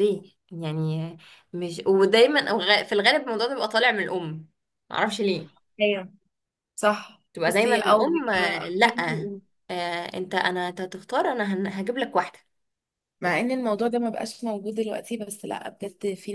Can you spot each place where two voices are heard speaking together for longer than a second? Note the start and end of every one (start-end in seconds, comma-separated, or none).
7.3-8.9